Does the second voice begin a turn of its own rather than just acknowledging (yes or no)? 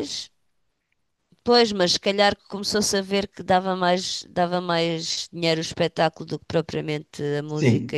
yes